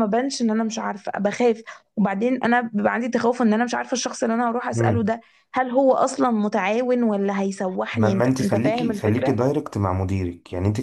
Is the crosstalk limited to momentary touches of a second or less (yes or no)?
no